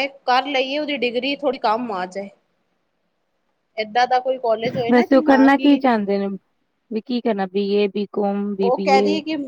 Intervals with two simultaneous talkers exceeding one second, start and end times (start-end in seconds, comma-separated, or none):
none